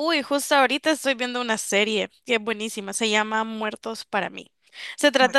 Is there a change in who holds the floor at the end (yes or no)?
no